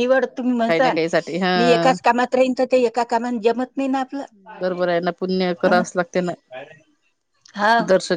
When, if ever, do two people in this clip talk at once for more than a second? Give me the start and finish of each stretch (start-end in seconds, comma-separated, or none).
none